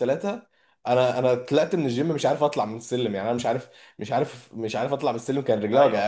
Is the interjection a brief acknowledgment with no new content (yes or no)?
no